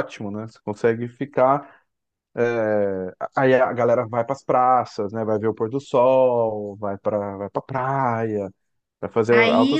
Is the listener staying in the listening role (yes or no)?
no